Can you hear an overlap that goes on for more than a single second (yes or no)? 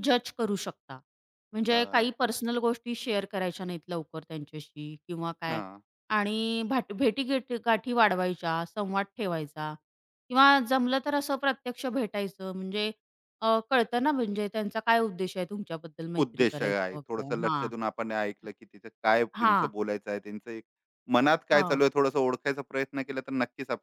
yes